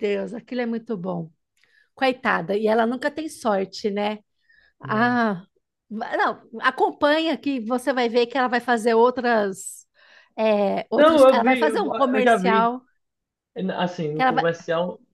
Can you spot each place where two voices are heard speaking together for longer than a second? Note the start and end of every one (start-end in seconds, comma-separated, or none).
11.0-12.7